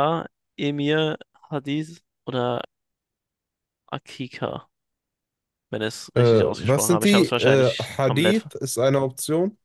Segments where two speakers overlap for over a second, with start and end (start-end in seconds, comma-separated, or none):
6.1-8.5